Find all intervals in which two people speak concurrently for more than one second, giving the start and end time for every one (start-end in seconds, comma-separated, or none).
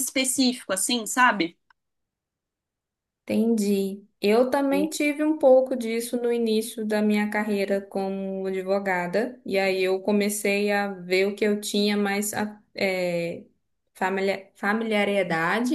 none